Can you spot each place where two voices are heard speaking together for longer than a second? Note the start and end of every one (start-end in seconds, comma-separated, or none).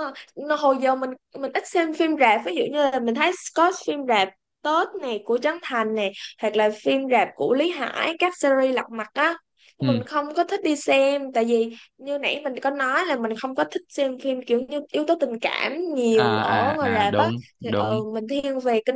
16.1-18.0